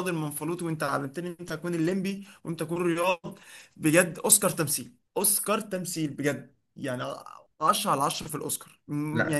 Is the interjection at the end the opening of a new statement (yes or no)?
no